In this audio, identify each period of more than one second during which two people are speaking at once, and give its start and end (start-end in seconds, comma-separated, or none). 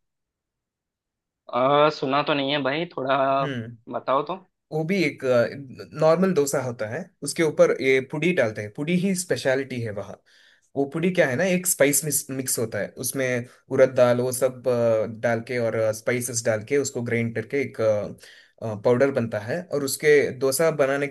none